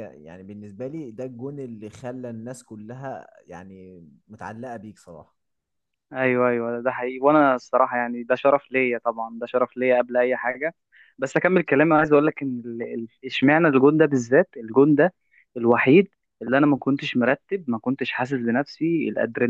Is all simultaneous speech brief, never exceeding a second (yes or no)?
yes